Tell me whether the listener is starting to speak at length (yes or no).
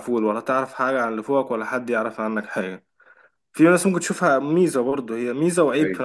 no